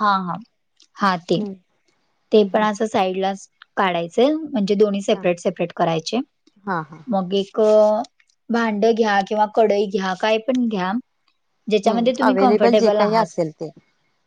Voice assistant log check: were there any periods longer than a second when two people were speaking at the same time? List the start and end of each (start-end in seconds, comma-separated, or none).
11.9-13.3